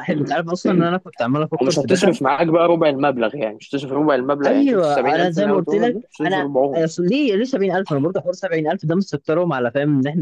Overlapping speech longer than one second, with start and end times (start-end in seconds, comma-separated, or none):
4.4-6.8